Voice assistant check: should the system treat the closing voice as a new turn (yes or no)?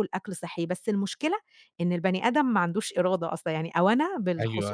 no